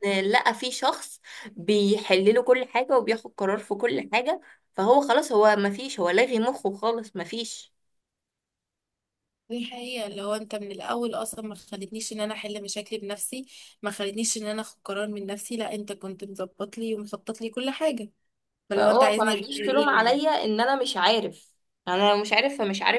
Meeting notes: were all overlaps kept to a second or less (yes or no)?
no